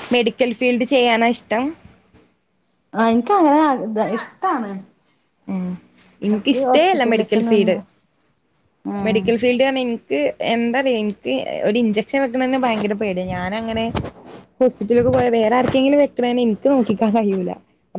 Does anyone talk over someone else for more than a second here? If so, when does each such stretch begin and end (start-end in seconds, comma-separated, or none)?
6.2-7.8